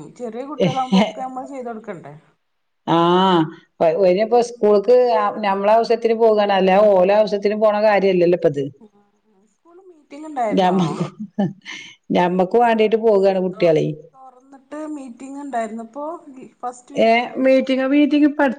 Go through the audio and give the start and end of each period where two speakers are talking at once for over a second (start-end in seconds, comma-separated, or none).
none